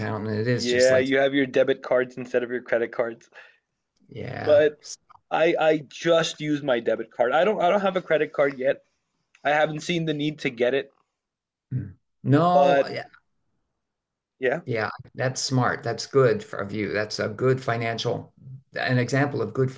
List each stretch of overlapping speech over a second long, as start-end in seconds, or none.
none